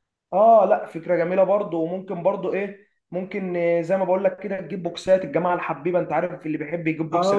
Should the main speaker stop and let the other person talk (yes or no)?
yes